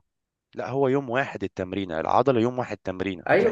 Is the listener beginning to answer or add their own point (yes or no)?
yes